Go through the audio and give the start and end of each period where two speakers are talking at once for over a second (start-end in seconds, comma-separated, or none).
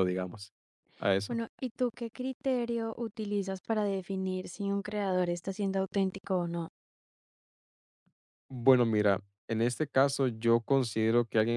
none